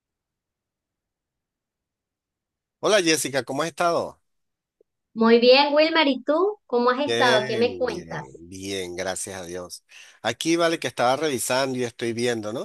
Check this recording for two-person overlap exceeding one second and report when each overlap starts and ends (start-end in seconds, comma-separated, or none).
7.0-8.4